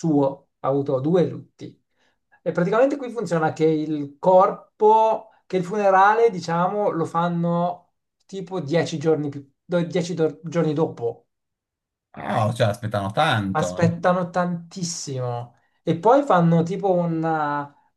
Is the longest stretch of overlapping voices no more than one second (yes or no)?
yes